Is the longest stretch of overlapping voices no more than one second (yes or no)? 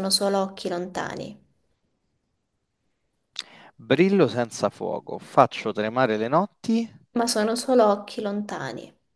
yes